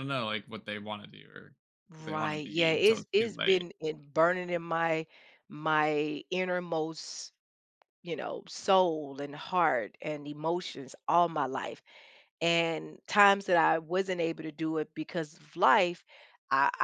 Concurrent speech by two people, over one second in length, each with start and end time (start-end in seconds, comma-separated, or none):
2.0-3.6